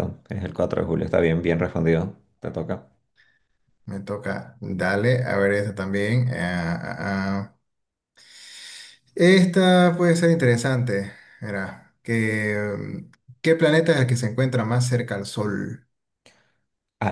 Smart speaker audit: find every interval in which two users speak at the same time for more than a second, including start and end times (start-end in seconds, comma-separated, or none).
none